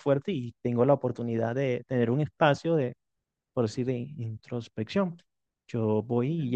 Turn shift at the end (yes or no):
no